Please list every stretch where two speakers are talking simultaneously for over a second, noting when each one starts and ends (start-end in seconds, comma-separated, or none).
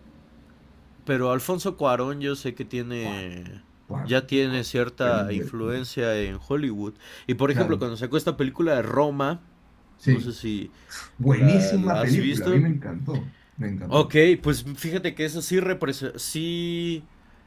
4.0-5.8, 11.3-12.6